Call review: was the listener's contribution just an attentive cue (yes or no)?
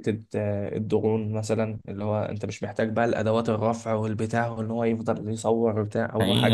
no